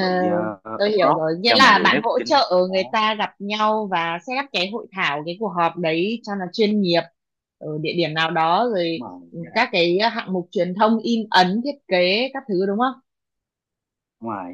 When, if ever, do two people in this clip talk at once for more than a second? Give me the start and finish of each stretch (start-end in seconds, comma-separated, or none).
0.8-3.0